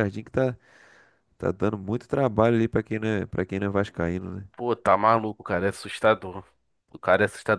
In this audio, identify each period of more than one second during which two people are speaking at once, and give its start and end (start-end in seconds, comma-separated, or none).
none